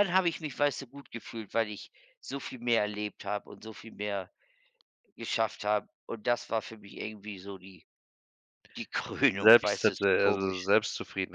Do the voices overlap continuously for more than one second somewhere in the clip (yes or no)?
yes